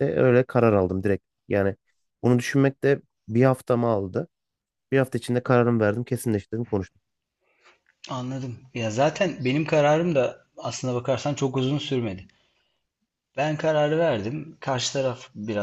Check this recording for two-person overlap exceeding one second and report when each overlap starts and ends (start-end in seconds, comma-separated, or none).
none